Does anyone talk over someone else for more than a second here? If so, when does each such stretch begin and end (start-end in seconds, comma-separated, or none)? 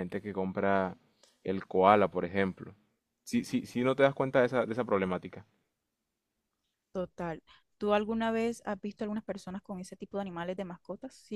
none